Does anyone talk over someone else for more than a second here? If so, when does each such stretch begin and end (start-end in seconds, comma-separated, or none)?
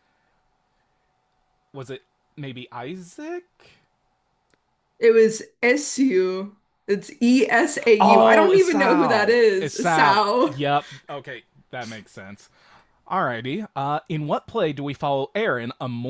8.0-10.5